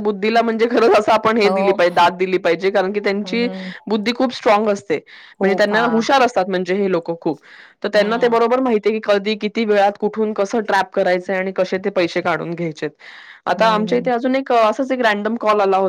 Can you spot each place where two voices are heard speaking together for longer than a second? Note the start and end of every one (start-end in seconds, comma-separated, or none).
none